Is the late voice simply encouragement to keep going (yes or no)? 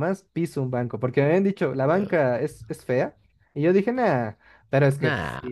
yes